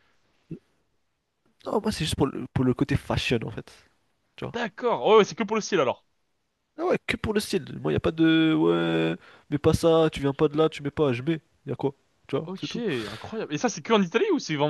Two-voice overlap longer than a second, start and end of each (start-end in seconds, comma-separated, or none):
none